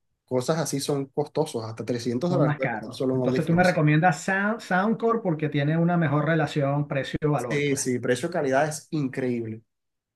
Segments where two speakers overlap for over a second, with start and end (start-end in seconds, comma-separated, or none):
2.3-3.8